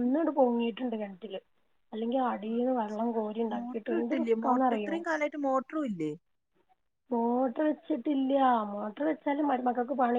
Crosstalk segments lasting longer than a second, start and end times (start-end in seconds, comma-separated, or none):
2.5-5.0